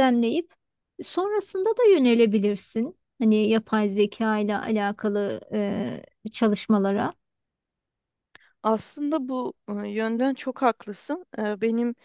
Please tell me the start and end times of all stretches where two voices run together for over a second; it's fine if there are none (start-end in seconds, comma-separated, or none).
none